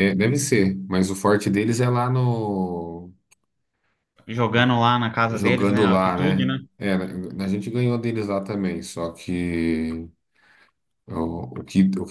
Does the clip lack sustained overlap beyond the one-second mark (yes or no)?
no